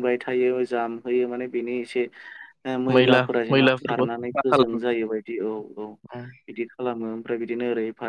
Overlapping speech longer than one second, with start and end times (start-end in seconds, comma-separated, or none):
3.0-4.8